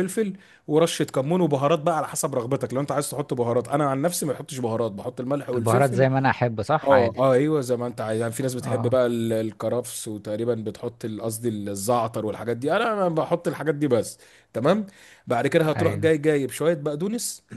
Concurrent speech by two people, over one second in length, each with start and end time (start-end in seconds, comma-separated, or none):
none